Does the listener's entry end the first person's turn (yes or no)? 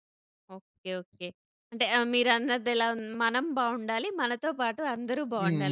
yes